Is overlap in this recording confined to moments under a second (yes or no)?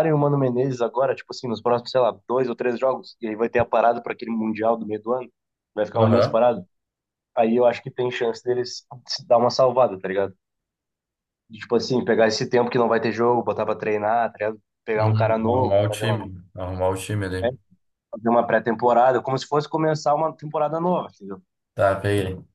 no